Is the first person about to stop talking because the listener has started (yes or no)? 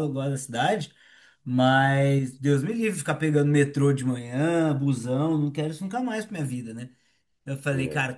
no